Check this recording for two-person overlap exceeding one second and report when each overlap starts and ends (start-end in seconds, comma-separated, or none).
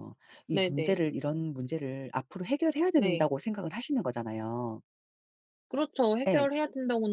none